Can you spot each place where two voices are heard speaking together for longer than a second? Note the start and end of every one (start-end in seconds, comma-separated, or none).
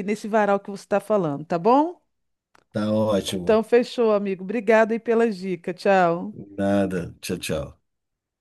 none